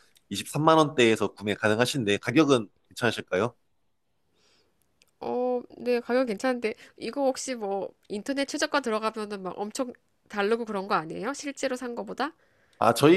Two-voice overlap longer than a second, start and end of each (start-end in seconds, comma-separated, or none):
none